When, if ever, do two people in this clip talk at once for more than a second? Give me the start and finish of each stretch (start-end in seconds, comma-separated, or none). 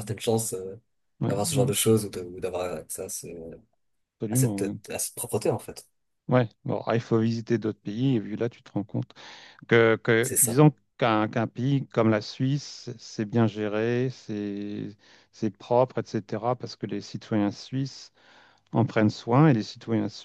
none